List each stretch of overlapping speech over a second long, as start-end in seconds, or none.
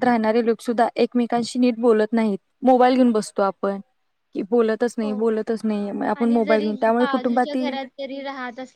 6.2-7.8